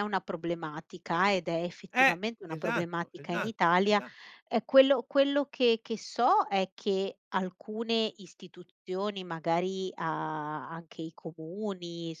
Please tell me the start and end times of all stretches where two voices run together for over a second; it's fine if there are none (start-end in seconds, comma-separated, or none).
1.9-4.0